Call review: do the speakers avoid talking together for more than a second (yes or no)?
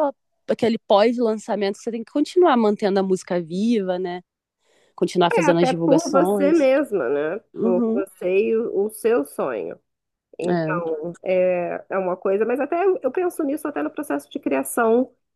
no